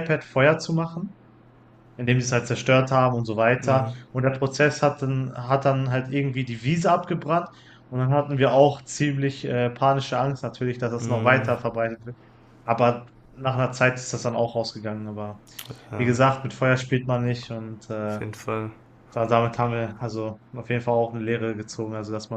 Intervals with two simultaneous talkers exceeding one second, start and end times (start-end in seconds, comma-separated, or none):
none